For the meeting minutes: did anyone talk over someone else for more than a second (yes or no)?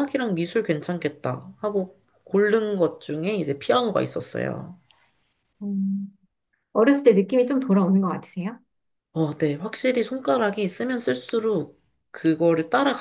no